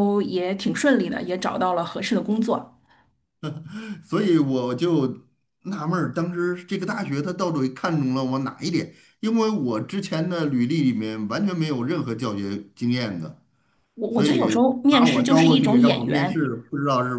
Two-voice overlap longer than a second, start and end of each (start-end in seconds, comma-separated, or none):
14.1-16.4